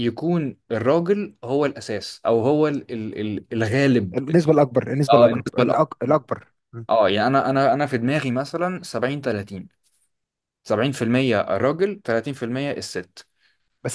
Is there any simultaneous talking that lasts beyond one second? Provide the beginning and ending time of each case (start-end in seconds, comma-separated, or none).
none